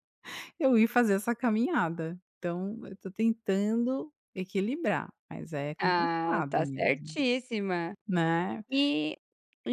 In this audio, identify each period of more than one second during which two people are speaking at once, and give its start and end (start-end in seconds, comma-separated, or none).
5.8-7.2